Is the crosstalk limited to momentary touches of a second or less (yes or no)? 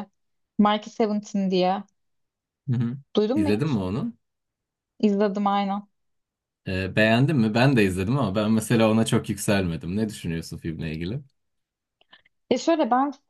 yes